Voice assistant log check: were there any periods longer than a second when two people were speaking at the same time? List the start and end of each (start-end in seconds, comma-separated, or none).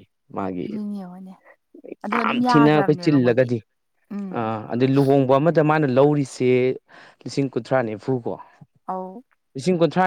2.2-3.5